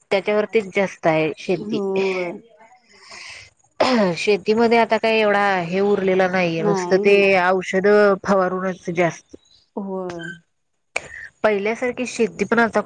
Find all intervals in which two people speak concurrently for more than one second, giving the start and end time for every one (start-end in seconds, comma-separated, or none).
none